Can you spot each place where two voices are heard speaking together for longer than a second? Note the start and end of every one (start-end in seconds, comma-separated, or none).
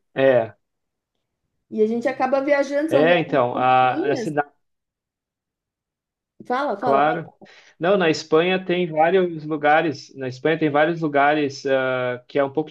2.9-4.2